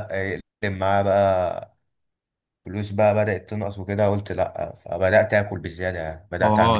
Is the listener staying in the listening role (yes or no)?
no